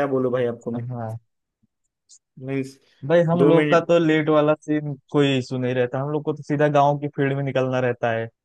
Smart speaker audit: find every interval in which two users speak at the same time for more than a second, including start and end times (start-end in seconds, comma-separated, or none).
none